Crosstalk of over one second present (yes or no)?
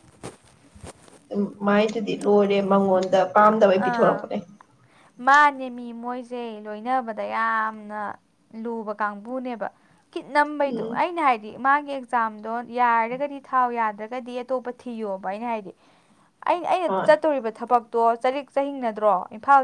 no